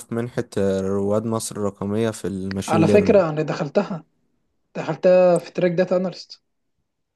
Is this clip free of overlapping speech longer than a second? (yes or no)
yes